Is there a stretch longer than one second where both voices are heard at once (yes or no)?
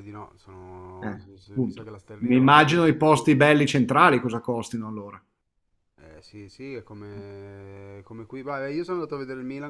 yes